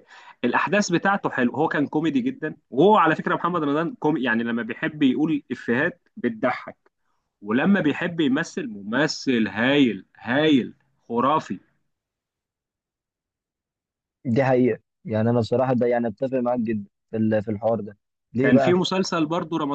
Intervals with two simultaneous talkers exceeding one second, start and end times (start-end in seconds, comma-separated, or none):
none